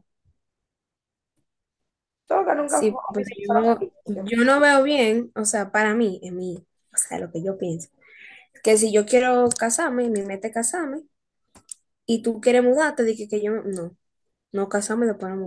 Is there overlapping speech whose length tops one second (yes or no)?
yes